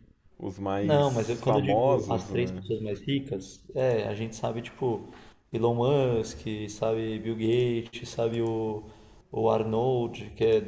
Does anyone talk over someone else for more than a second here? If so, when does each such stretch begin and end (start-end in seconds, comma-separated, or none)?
0.8-2.6